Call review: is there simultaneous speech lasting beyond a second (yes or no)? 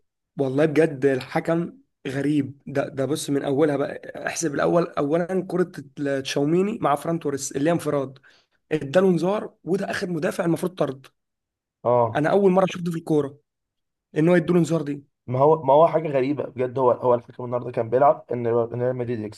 no